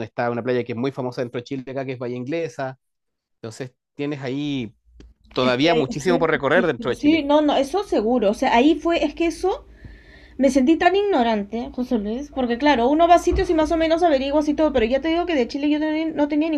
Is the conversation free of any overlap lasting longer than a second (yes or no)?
no